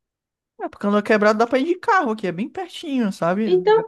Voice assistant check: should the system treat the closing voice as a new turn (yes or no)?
yes